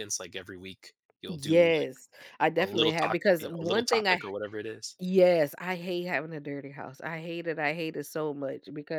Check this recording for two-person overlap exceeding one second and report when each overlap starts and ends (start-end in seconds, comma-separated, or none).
2.6-4.2